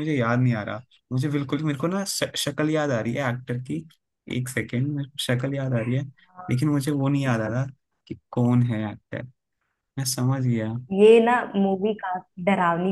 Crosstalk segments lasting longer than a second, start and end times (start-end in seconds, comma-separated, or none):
none